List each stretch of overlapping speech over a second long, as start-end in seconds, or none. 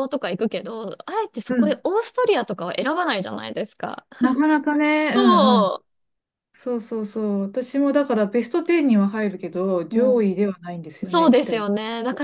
none